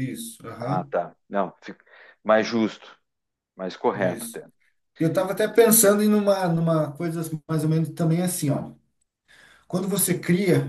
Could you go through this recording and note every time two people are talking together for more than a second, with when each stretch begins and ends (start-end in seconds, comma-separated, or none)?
none